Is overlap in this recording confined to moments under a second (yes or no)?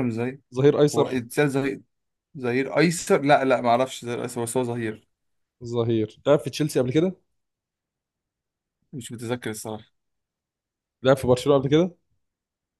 yes